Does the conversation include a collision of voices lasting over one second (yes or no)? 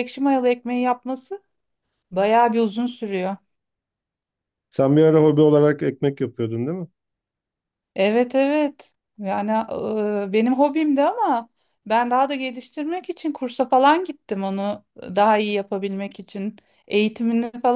no